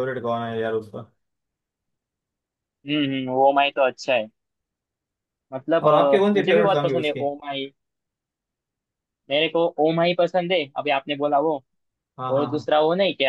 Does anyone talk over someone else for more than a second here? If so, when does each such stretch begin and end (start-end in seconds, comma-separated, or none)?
5.8-7.3